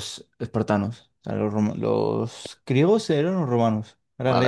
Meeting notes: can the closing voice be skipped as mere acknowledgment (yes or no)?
no